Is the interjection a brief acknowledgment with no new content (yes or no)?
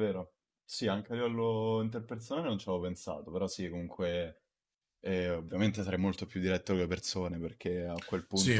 yes